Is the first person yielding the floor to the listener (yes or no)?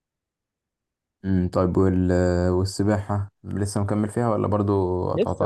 yes